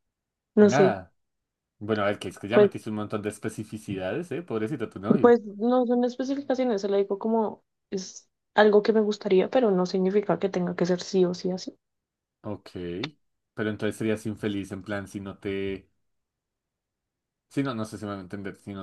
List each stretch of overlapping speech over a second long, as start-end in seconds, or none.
none